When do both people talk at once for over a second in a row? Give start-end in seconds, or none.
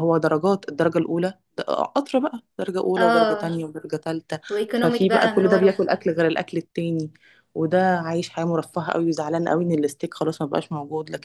4.5-5.8